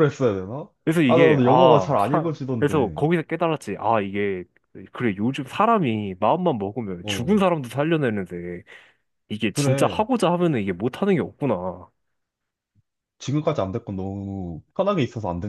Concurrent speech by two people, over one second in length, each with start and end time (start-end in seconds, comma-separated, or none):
1.1-3.0